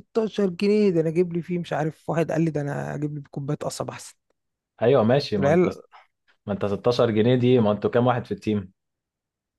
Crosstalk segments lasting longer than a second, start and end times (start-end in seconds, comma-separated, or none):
none